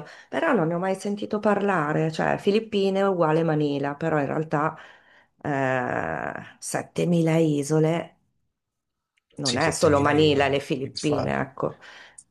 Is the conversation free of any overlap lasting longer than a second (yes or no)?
no